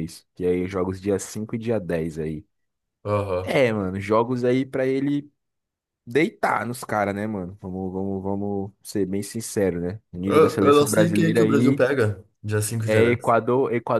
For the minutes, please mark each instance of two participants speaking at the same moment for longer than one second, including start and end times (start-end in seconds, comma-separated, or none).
10.2-11.8